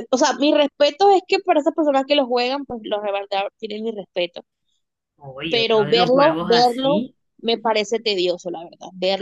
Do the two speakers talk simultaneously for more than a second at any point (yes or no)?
yes